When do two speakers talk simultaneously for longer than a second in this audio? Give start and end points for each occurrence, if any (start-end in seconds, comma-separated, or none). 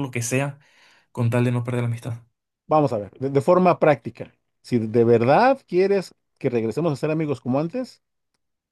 none